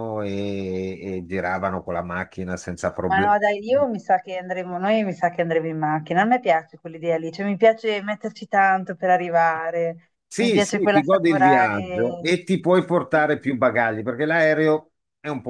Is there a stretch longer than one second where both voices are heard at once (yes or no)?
yes